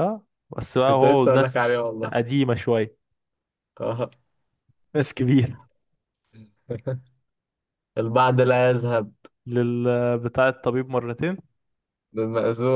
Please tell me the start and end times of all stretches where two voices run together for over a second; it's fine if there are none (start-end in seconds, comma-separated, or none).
0.8-2.1